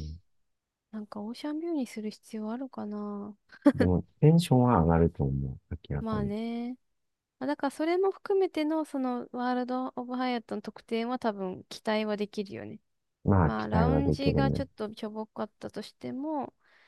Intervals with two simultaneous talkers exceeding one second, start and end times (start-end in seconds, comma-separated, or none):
13.4-14.6